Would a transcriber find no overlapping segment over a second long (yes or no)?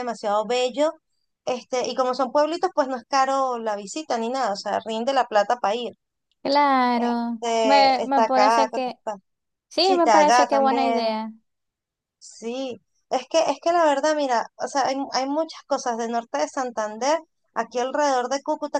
no